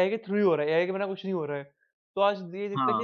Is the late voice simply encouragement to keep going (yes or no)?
yes